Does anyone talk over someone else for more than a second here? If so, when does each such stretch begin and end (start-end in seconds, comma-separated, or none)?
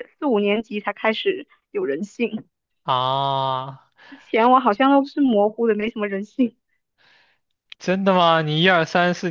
none